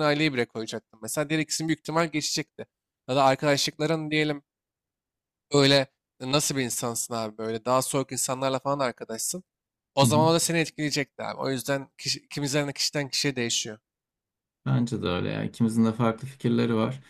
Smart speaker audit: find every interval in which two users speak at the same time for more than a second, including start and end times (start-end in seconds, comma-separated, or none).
none